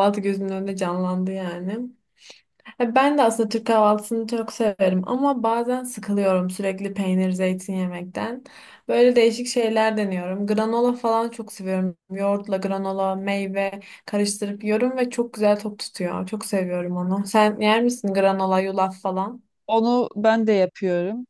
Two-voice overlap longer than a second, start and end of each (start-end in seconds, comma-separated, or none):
none